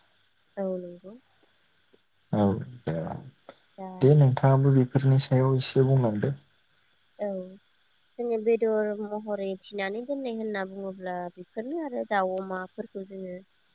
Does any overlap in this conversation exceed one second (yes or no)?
no